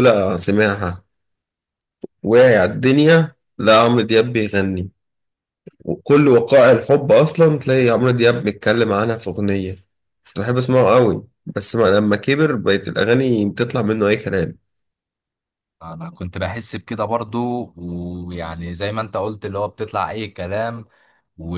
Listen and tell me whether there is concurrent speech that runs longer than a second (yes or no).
no